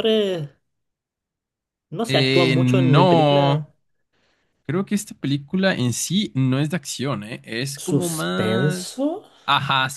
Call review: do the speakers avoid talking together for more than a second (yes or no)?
no